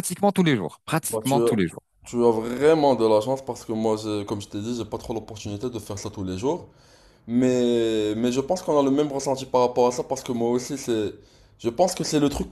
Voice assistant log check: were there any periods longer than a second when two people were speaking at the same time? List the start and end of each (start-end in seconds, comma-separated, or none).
none